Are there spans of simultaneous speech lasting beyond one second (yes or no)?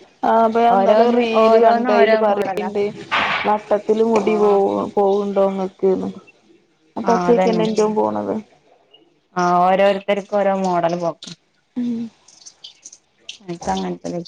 yes